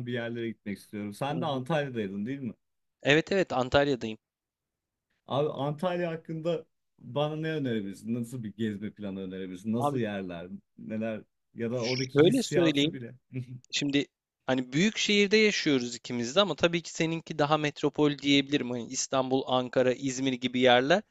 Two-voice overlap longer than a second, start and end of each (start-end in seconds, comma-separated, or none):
11.8-13.0